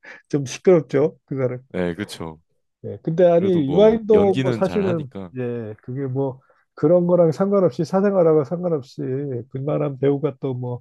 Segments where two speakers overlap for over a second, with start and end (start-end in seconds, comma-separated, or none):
3.4-5.3